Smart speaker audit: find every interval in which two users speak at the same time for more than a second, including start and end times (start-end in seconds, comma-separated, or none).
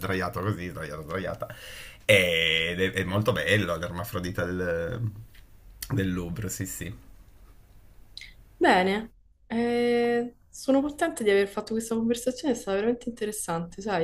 none